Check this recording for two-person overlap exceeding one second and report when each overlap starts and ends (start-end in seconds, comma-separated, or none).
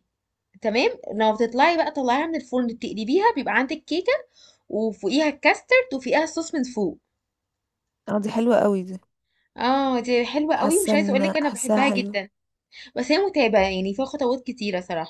10.6-12.1